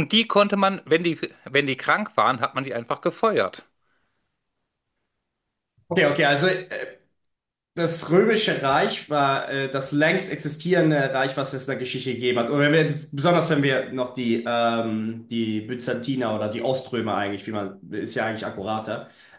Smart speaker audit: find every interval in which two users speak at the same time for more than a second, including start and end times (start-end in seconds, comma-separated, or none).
none